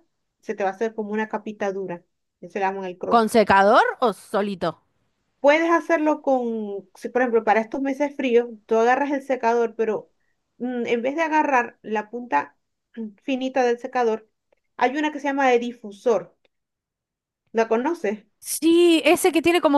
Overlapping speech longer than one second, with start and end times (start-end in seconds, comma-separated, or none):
none